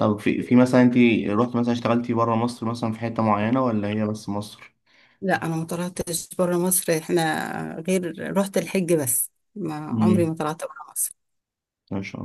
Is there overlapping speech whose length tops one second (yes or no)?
no